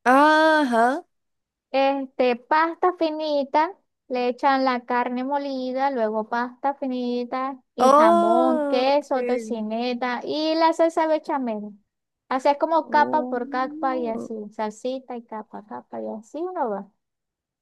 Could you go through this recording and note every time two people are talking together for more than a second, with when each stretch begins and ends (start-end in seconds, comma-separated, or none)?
7.8-9.6, 12.8-14.3